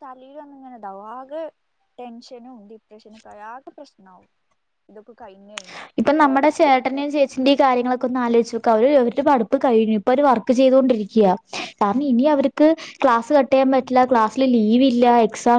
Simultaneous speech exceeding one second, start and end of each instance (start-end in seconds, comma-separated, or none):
none